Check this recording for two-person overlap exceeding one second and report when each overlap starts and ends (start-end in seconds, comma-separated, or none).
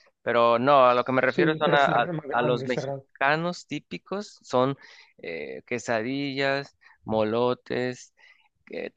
1.3-3.0